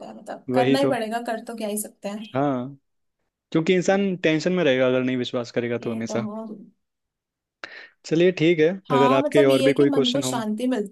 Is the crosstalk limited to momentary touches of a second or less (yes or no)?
no